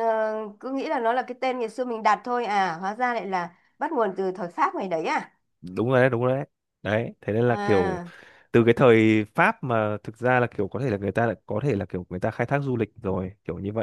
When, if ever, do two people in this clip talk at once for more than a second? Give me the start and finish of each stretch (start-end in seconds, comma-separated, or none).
none